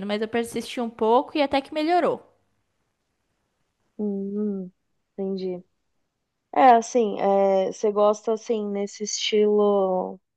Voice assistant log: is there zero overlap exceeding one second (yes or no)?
yes